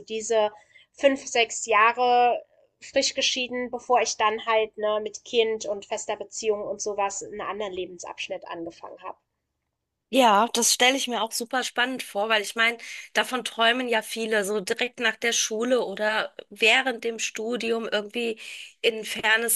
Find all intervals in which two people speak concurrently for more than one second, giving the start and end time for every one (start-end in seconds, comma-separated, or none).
none